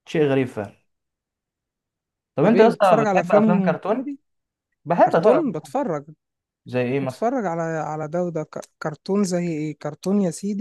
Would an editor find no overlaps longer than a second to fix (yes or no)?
no